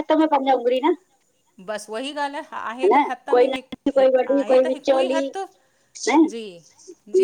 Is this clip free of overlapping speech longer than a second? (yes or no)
no